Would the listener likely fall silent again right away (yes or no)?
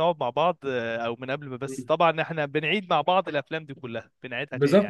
no